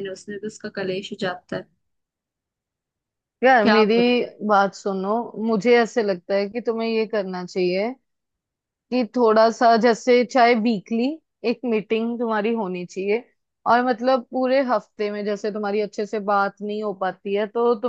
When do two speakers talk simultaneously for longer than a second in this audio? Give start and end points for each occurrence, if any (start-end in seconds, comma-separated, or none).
none